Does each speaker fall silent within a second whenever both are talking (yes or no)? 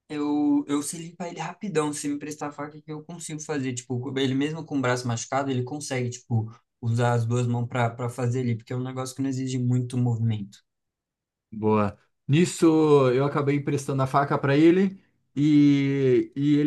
yes